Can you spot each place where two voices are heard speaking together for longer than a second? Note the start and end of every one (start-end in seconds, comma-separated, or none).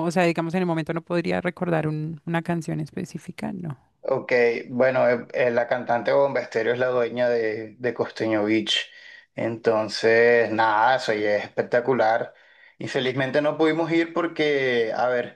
none